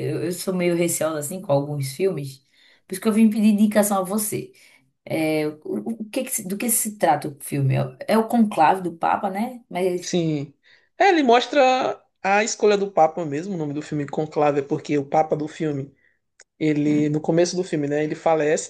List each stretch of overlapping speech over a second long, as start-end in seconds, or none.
none